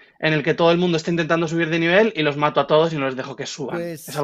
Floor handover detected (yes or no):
yes